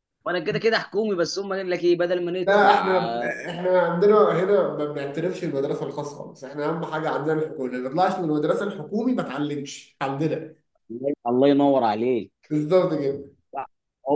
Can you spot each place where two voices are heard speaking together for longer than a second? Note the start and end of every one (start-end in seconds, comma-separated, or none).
none